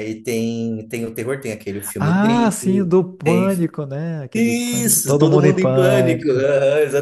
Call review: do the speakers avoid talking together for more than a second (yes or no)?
no